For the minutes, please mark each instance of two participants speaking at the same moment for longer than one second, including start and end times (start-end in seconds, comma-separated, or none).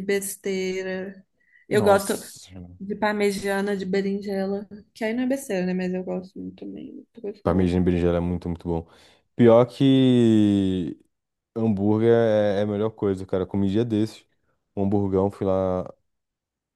none